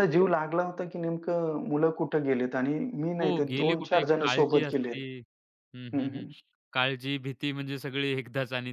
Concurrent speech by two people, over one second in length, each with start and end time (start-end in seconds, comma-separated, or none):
3.2-5.0